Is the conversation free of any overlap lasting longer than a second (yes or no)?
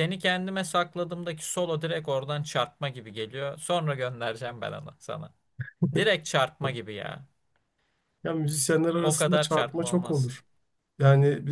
no